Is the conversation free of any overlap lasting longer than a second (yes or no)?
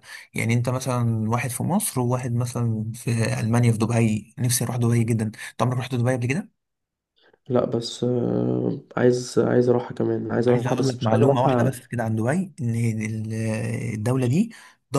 no